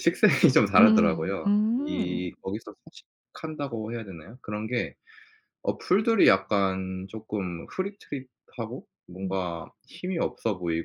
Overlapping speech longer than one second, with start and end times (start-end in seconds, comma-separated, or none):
0.8-2.4